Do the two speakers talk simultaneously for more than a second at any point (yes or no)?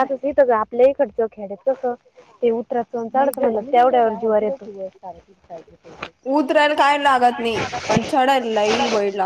no